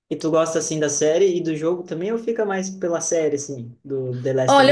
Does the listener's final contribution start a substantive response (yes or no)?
yes